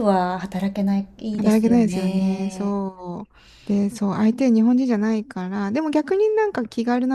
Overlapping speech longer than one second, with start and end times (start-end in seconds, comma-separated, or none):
1.4-2.8